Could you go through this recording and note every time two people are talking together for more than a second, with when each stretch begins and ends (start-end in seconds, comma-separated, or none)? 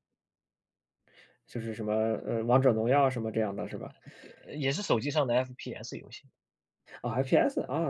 none